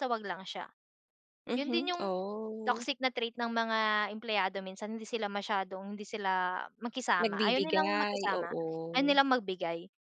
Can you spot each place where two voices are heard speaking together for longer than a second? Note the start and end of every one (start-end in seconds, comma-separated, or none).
7.2-8.5